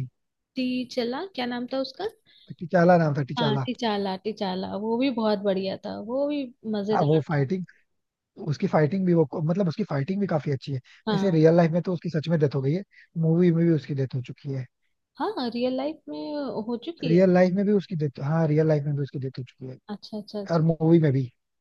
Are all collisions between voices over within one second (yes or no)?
yes